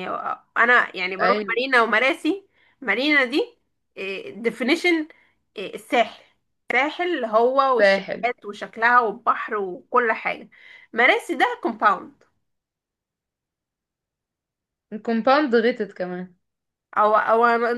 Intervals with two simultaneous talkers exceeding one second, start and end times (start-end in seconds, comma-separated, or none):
none